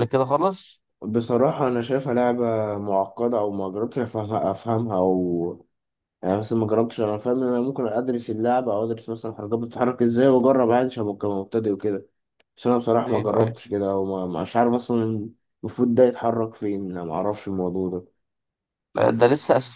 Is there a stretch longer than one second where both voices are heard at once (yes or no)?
no